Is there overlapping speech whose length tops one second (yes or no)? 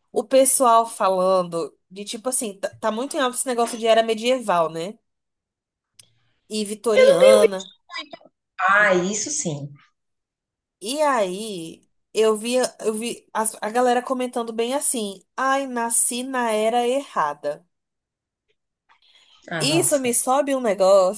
no